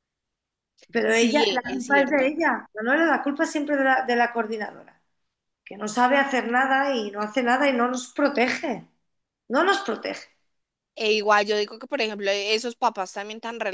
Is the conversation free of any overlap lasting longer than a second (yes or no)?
no